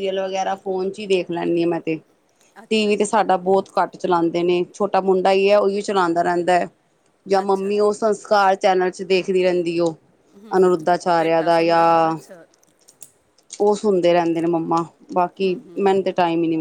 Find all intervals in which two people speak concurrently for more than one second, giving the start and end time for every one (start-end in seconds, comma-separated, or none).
10.6-12.2